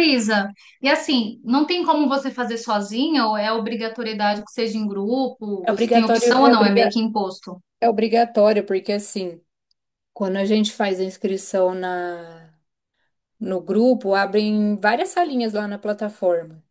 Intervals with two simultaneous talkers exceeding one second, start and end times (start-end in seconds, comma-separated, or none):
5.6-7.0